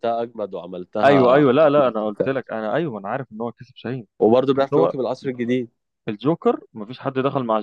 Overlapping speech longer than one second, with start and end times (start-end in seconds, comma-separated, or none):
1.0-2.4